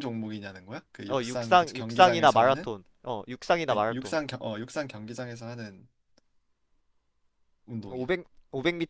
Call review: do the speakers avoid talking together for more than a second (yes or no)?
no